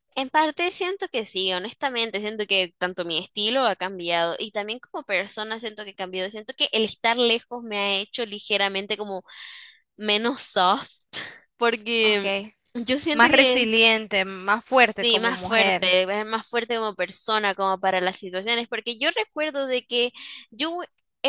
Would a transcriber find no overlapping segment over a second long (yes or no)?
no